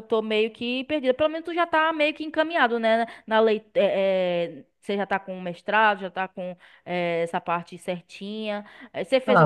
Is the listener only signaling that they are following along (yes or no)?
no